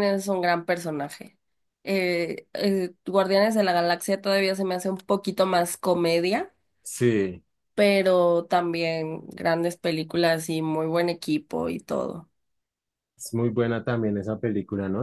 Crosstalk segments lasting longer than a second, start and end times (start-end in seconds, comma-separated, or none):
none